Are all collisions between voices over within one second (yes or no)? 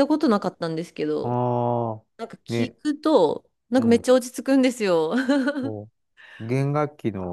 yes